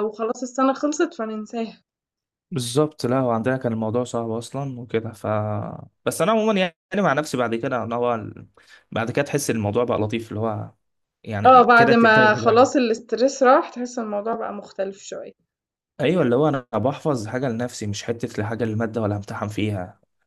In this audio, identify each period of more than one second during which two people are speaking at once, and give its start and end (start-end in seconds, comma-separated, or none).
11.5-12.7